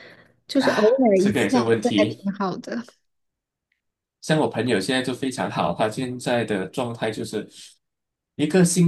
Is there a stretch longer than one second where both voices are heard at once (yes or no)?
yes